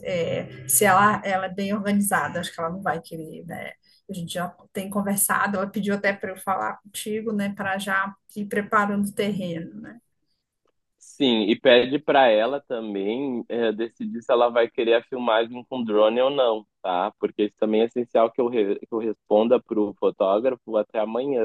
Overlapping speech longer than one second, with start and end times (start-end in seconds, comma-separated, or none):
none